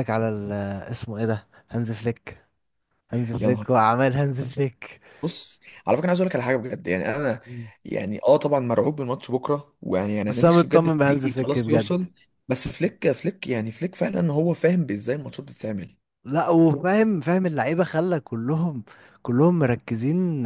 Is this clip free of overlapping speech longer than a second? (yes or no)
no